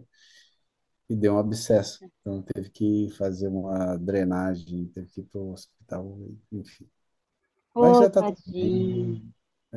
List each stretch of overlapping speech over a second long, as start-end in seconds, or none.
7.8-9.2